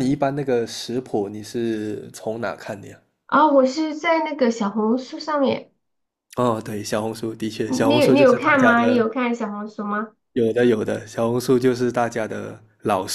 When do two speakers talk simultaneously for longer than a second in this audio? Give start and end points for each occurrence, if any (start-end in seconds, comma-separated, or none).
7.7-9.1